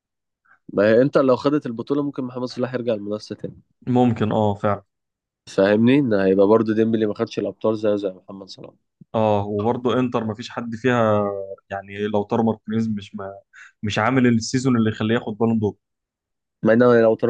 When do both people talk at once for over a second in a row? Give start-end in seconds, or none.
none